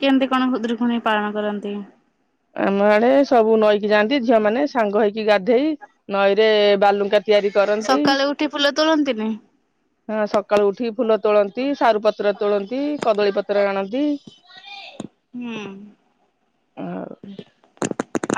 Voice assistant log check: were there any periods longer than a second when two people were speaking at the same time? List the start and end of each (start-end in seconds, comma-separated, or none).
none